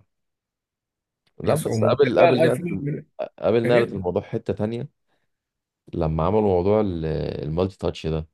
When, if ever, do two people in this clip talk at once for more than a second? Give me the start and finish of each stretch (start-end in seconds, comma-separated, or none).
1.4-2.8